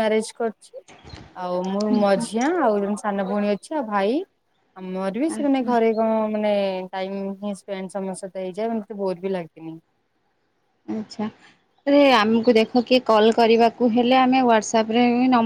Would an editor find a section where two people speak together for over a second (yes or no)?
no